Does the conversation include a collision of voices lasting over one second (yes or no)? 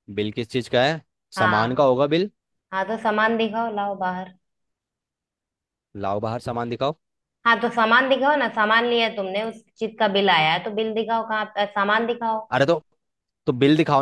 no